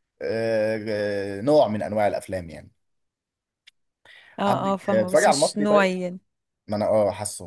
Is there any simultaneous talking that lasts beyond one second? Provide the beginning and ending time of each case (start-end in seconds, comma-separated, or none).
4.5-5.9